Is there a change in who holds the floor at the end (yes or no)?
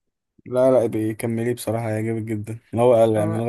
no